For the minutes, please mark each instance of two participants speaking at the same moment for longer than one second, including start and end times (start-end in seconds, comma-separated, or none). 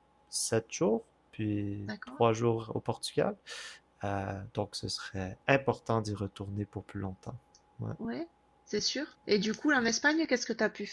none